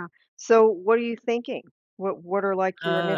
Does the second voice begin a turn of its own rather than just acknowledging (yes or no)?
yes